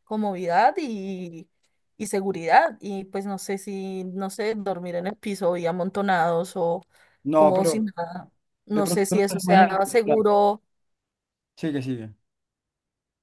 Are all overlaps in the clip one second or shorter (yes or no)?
no